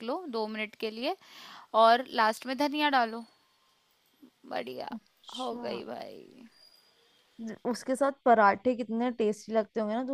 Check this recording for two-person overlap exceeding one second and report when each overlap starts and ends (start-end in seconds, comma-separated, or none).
none